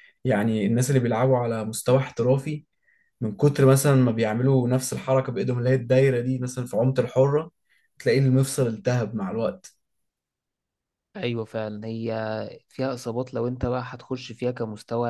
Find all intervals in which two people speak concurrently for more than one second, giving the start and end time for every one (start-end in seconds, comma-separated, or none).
none